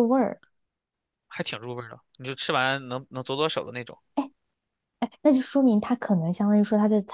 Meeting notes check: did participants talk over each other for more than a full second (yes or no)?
no